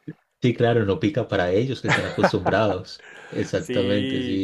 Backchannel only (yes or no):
no